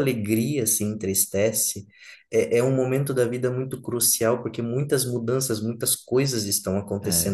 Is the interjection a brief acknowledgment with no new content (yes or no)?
no